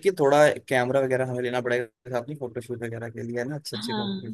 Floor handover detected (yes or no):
yes